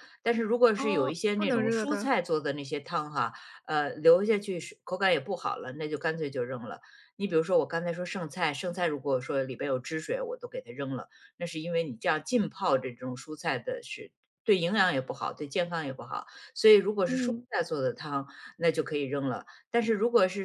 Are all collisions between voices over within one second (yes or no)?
no